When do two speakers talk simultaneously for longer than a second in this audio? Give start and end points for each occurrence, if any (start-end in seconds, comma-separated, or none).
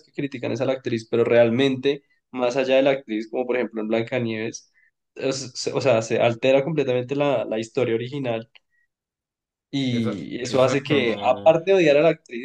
9.9-11.6